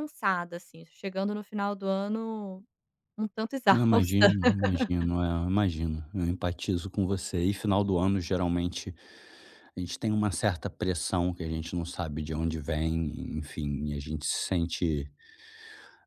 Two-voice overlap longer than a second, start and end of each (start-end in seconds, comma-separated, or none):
none